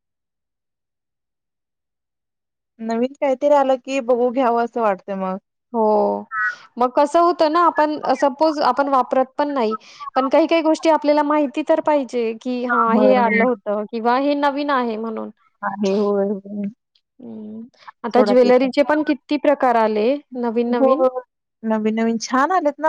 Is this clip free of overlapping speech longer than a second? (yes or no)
yes